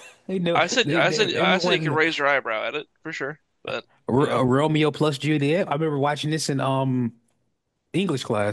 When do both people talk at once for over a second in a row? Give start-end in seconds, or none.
0.5-2.0